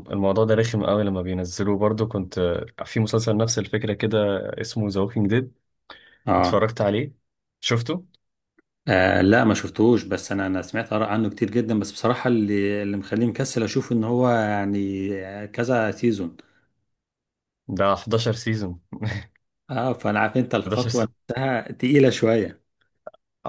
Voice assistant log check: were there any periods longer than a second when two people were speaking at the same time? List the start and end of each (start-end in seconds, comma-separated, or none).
none